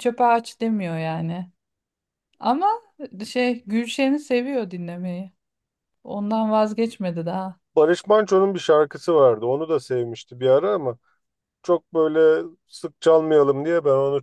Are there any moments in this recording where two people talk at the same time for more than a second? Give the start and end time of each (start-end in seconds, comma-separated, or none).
none